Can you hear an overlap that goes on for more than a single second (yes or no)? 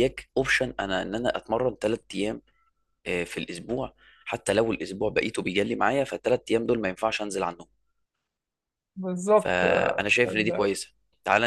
yes